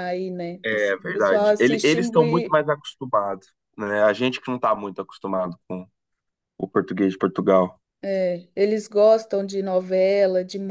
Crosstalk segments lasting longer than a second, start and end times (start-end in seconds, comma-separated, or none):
0.7-2.0